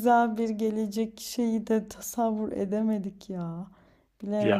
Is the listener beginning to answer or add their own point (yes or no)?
no